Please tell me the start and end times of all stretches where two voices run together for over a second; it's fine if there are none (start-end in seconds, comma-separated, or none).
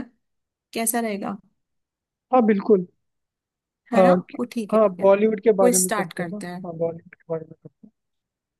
3.9-6.6